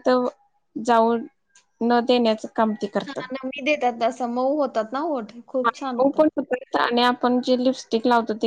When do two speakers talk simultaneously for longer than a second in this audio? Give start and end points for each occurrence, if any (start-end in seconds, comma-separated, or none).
none